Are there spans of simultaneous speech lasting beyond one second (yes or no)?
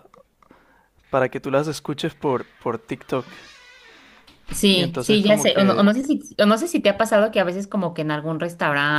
yes